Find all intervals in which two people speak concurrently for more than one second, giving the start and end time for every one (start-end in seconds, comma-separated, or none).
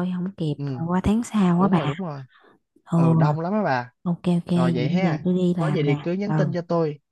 4.5-6.5